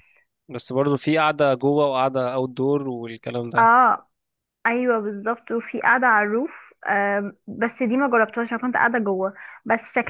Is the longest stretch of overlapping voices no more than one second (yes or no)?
yes